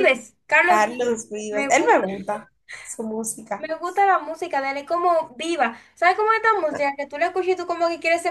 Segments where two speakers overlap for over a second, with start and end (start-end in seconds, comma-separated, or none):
0.6-2.1